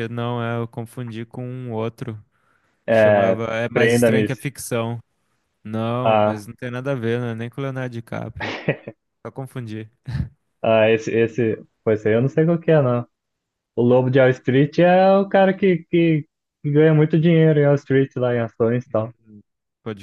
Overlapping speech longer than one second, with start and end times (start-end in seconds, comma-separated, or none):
2.9-4.2